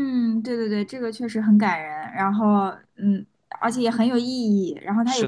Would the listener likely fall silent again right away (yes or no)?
yes